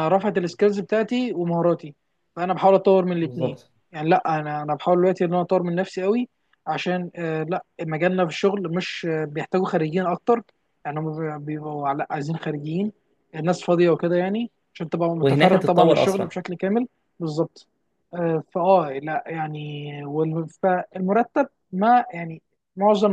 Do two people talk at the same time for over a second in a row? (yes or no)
yes